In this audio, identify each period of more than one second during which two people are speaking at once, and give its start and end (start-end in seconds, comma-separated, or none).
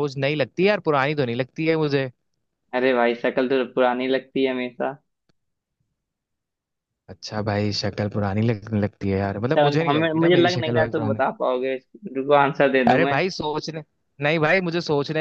9.4-11.2